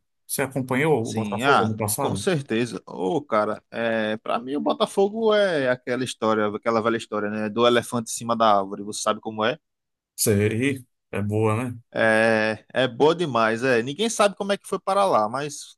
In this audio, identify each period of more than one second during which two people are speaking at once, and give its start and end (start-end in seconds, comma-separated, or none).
1.0-2.3